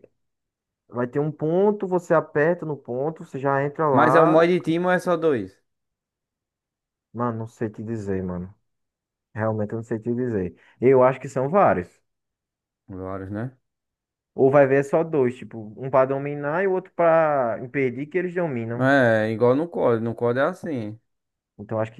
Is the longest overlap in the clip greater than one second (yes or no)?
no